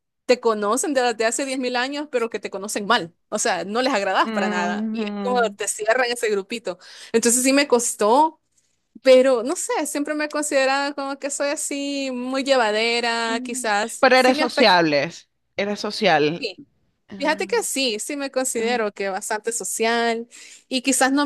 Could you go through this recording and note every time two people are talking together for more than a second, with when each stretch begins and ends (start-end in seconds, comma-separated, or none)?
4.2-5.6, 13.2-14.8